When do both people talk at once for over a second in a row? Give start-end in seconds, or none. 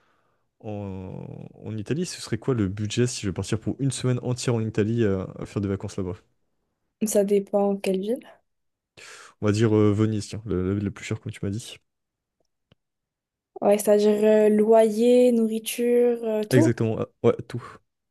none